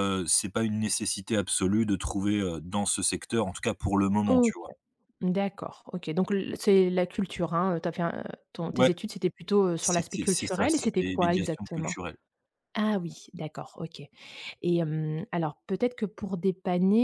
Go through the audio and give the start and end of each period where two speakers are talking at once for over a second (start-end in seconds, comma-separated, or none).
9.8-11.9